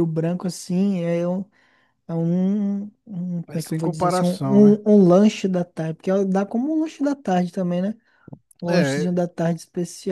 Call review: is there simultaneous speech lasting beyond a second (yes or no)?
yes